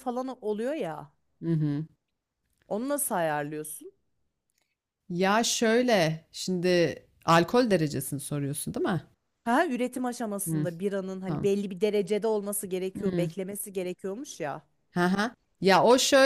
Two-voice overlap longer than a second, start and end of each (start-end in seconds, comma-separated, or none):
none